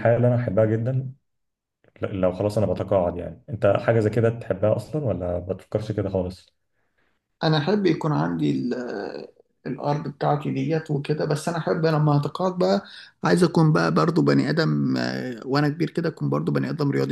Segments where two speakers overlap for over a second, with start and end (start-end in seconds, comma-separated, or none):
none